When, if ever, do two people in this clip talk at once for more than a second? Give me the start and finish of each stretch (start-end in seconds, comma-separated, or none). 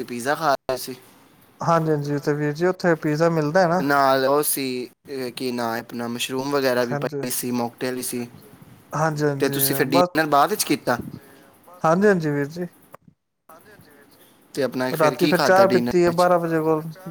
15.0-16.3